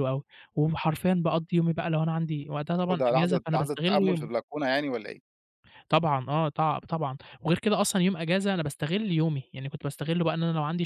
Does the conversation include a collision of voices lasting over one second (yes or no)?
yes